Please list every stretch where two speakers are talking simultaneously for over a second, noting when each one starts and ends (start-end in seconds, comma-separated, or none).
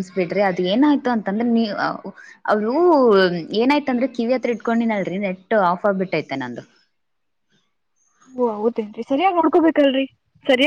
none